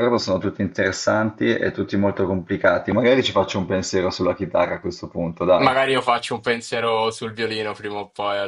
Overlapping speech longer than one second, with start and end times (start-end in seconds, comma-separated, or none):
none